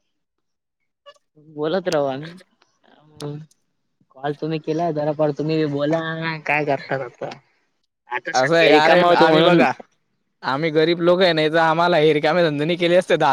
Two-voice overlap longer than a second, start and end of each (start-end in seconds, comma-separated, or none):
8.4-9.6